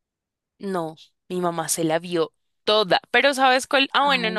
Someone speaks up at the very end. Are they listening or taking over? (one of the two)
listening